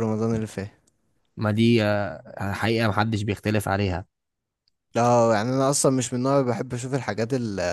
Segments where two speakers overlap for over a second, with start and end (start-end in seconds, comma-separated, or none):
none